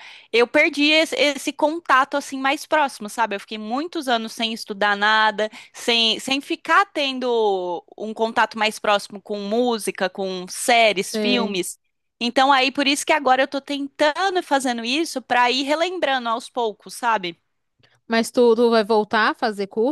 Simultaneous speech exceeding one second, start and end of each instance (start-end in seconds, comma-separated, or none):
none